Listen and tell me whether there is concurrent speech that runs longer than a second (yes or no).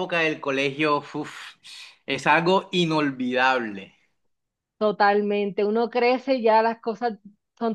no